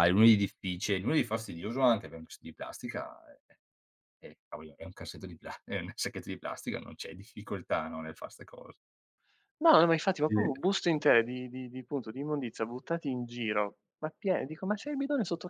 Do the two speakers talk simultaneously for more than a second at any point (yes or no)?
no